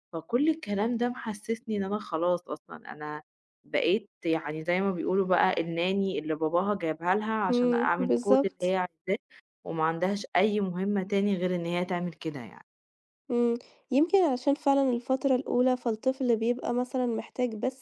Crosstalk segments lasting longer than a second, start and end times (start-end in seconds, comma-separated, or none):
7.5-8.8